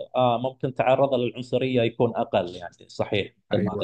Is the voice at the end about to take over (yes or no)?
yes